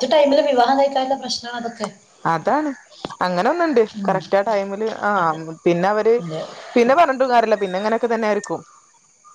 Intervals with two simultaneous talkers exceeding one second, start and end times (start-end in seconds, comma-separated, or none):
none